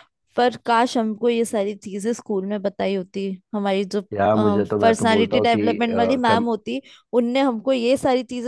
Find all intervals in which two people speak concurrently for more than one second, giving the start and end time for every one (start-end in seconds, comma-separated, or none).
4.1-6.4